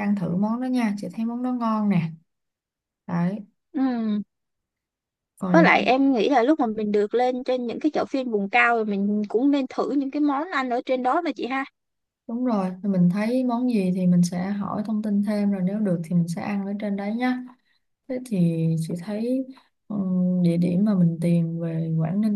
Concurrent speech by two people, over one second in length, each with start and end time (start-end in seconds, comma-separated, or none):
none